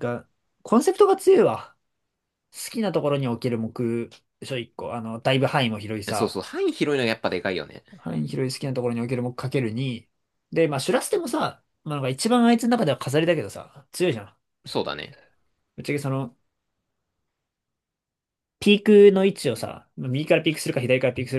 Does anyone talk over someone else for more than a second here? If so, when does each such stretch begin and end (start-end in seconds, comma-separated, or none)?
none